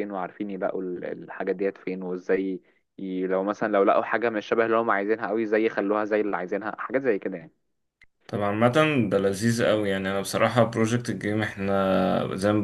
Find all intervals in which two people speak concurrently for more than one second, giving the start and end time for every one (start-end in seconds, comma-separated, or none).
none